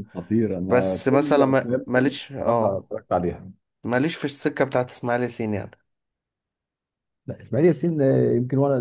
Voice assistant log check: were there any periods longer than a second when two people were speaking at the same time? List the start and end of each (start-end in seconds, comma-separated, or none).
0.7-2.9